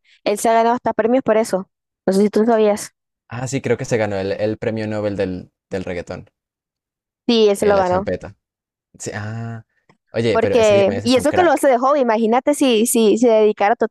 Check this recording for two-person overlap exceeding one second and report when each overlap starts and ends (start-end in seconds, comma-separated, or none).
10.3-11.7